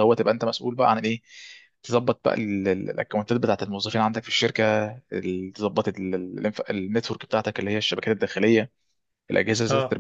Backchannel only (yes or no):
yes